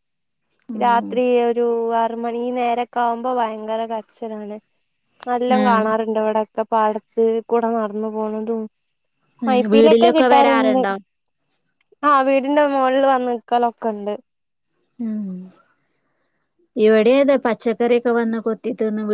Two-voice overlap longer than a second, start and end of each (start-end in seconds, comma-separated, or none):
none